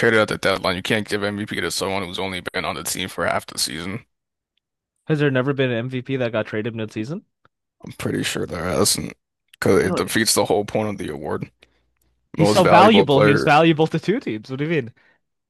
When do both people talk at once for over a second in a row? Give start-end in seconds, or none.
12.4-13.6